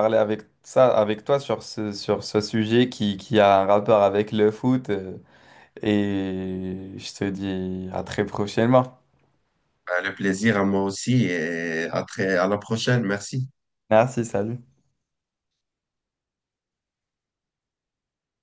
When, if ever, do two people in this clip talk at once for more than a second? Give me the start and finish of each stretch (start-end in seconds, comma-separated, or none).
none